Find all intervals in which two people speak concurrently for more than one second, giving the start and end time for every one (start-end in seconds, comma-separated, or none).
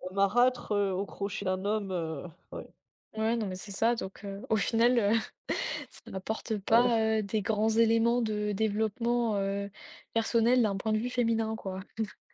none